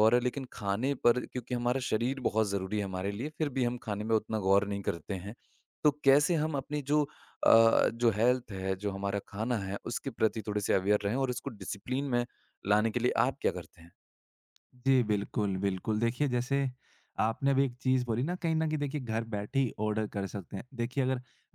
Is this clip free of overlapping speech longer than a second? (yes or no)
yes